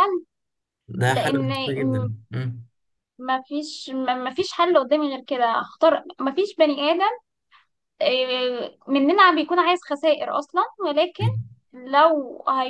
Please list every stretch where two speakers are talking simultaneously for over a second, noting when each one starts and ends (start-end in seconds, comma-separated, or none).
none